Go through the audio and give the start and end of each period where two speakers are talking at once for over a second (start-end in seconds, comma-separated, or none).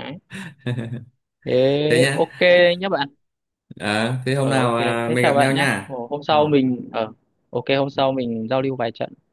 4.4-6.4